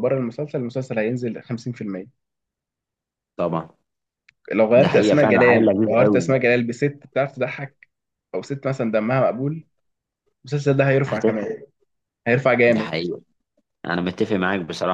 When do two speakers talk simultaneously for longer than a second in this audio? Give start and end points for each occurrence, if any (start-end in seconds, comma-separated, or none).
4.7-6.3